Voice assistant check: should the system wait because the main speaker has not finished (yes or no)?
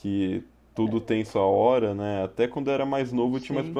yes